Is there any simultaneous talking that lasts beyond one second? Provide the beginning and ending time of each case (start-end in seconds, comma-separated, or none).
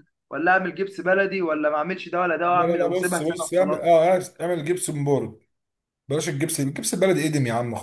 2.5-3.9